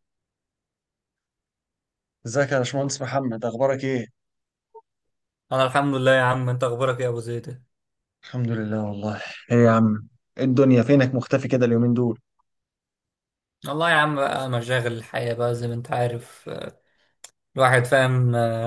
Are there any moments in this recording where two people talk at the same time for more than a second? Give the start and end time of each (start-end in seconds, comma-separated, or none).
none